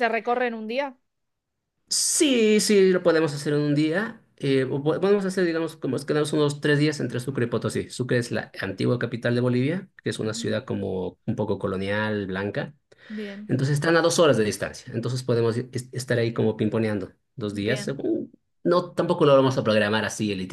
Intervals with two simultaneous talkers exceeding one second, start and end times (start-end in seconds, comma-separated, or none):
none